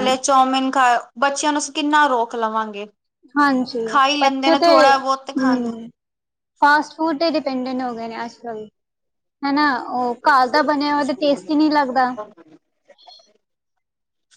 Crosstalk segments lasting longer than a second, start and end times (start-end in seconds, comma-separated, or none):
4.2-5.9